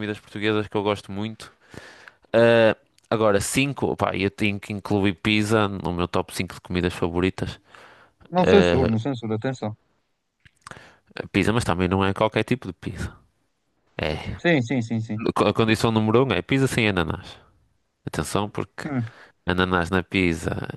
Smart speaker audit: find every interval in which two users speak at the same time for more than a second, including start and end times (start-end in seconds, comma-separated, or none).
none